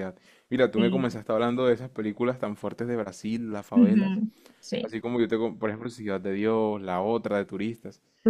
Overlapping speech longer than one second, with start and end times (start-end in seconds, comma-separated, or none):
none